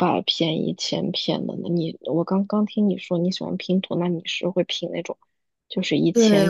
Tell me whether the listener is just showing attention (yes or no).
no